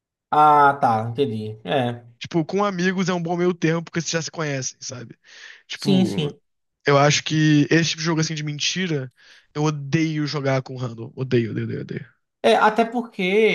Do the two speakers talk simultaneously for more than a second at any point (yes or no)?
no